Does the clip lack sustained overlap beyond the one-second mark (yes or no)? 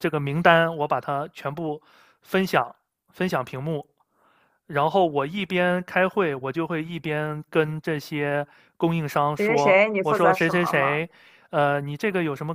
no